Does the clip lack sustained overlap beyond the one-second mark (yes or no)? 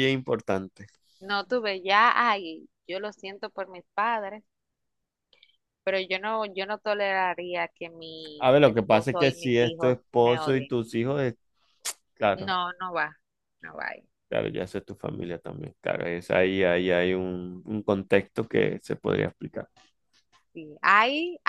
no